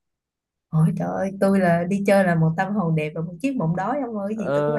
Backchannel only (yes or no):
no